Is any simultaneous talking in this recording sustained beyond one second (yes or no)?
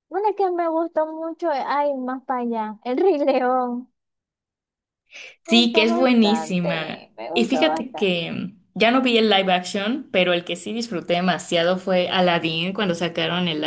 yes